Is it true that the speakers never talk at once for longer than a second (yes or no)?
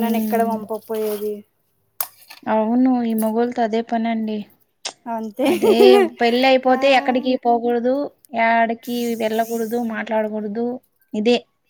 yes